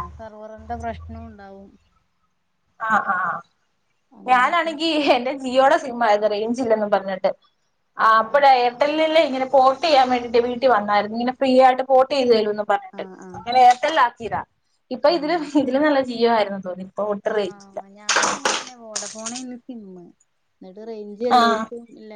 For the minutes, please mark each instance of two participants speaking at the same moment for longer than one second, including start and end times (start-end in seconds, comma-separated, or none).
none